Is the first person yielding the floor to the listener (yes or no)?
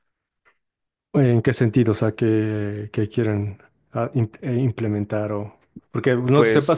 no